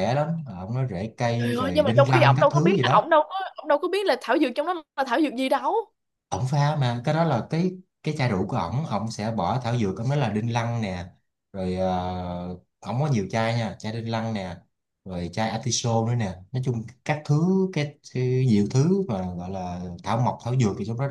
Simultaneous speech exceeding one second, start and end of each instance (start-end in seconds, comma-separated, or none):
1.4-3.1